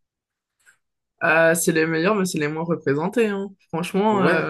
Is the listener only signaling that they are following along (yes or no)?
no